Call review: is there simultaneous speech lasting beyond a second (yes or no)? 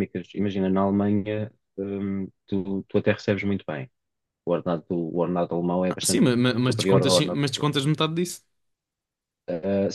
yes